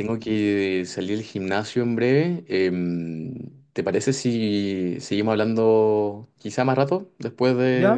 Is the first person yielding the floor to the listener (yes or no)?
yes